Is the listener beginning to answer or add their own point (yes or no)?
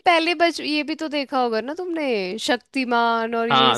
yes